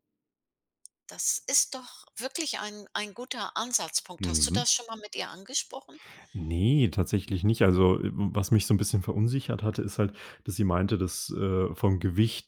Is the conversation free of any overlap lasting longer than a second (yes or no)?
yes